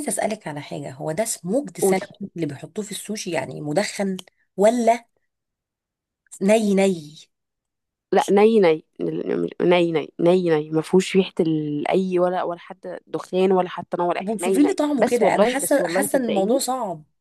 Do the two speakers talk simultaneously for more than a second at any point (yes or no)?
yes